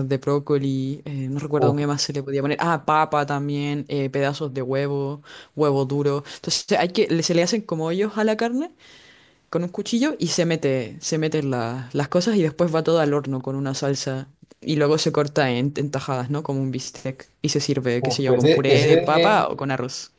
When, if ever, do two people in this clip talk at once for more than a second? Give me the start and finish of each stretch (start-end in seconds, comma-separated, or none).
18.0-19.4